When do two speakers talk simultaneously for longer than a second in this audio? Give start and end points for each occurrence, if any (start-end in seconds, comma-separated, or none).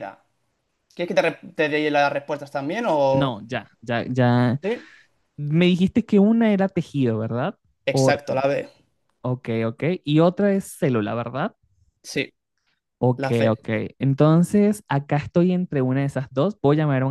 none